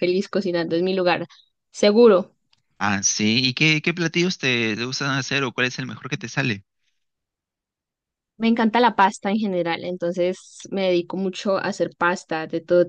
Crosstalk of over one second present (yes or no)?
no